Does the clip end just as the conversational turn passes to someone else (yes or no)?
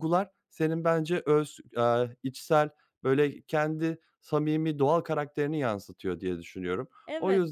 yes